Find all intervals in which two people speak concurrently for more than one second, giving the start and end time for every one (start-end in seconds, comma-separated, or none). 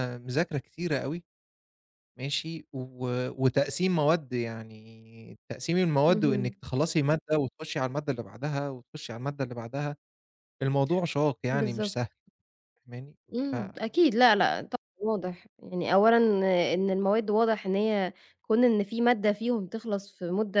none